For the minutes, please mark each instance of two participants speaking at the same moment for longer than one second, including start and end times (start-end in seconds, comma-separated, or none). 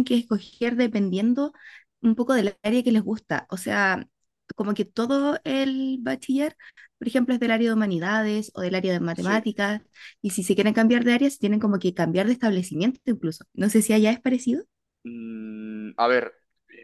none